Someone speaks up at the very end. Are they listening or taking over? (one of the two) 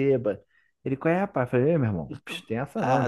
taking over